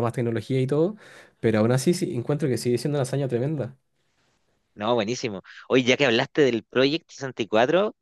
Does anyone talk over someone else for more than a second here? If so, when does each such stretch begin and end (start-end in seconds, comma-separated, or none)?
none